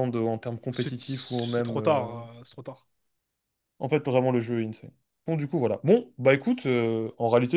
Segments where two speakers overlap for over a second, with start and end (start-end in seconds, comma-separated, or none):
0.7-2.1